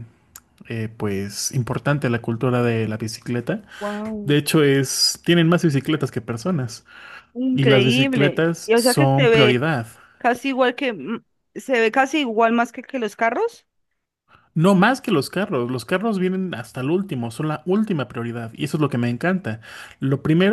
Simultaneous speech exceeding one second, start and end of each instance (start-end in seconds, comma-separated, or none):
7.5-9.6